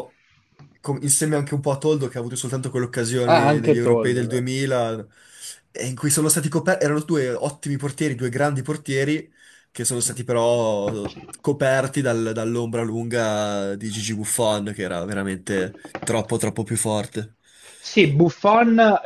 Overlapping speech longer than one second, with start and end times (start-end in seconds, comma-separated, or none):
3.2-4.5